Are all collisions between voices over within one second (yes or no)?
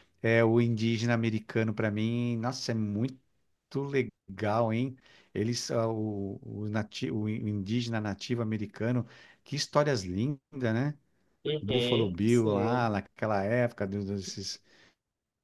no